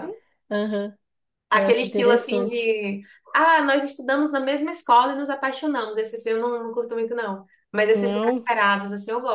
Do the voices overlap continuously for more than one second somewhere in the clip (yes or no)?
yes